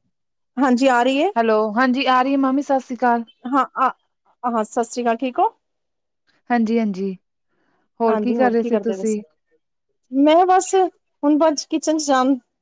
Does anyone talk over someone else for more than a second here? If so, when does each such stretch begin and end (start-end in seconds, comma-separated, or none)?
none